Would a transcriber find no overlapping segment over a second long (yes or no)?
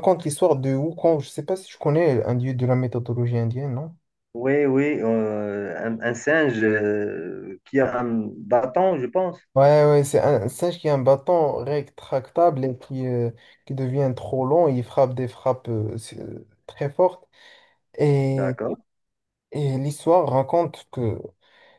yes